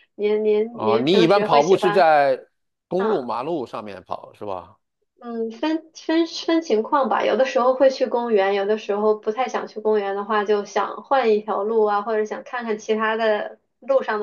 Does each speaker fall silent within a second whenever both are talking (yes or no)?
no